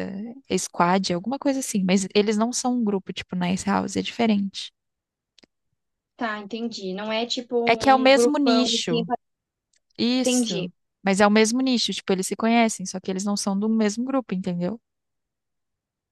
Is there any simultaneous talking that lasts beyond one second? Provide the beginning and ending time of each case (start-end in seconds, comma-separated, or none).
7.7-9.1